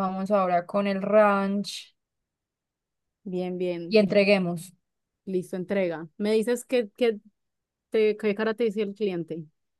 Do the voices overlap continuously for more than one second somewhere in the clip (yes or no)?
no